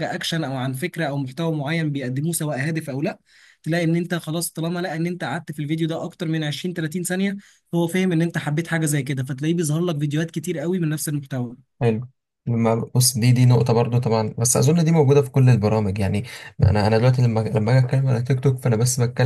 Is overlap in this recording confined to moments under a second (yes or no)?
yes